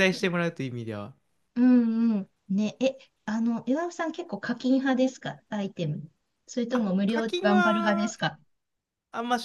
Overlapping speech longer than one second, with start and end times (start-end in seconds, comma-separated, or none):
6.7-8.2